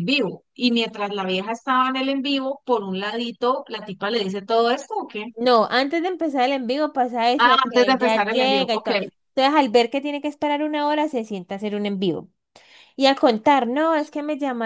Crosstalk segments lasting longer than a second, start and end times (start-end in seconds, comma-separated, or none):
7.4-8.9